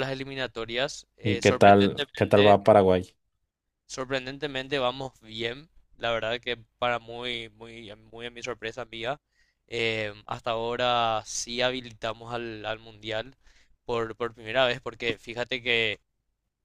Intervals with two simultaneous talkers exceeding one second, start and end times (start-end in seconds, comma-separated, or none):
1.2-2.6